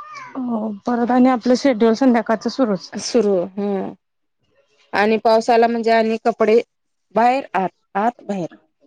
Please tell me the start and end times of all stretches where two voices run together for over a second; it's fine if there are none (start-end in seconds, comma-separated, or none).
none